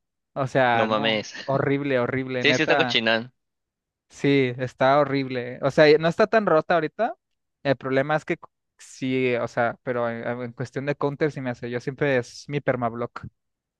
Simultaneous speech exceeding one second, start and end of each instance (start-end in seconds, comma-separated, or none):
none